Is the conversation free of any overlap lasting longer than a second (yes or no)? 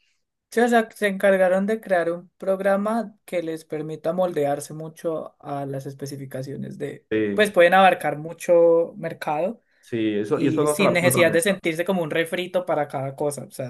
no